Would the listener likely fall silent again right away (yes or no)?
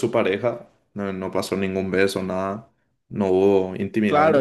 no